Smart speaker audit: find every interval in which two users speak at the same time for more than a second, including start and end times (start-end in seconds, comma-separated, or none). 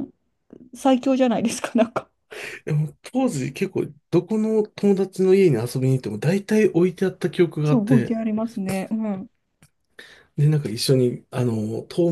none